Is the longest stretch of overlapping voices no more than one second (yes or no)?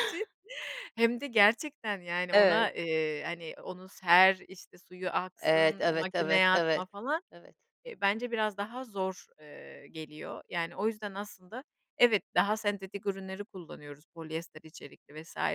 no